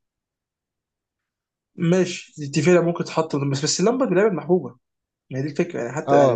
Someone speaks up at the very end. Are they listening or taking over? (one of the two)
taking over